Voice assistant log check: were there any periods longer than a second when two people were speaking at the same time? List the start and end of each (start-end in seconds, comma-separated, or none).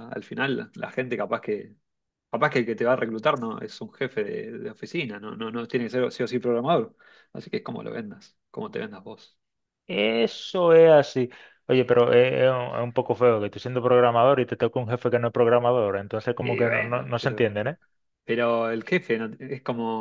16.4-17.6